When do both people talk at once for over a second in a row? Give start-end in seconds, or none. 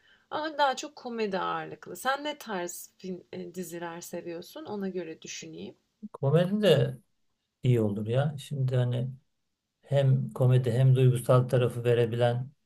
none